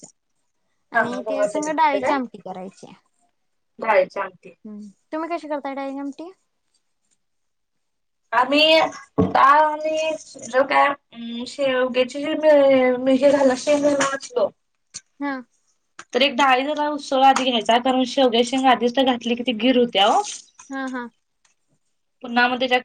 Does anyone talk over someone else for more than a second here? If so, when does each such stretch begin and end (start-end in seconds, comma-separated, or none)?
1.0-2.4